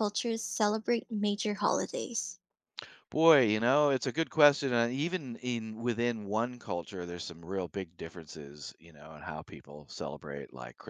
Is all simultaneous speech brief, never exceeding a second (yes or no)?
yes